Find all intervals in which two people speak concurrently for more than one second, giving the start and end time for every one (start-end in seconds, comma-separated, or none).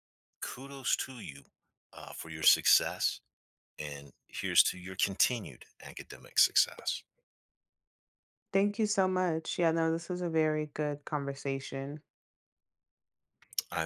none